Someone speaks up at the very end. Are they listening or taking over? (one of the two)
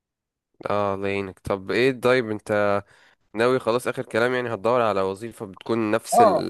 taking over